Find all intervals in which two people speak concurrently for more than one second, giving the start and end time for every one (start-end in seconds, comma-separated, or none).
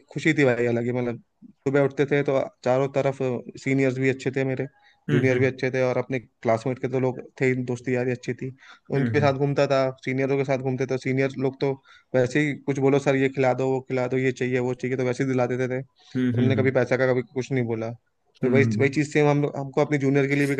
none